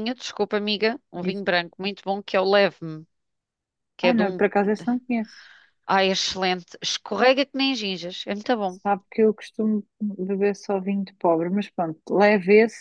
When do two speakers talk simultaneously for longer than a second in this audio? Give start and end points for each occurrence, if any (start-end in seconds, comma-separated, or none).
none